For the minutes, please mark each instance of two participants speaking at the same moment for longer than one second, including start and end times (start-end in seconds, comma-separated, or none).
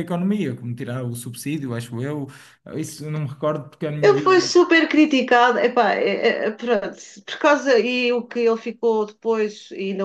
none